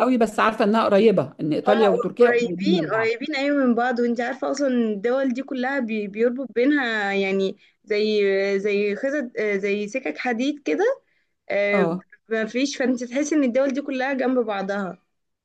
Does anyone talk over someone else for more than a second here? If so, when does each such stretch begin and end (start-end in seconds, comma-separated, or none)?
1.7-3.2